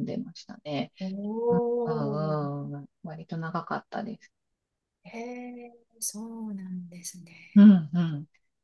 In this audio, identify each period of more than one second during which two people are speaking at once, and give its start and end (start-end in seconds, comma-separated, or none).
none